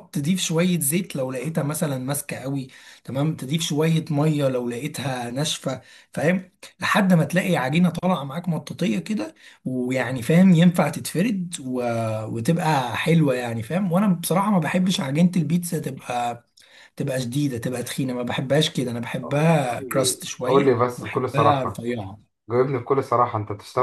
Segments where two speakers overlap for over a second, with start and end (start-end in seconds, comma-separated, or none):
19.6-21.9